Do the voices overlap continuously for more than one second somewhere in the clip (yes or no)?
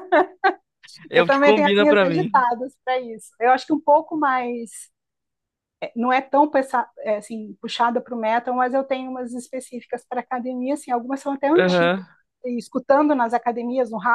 yes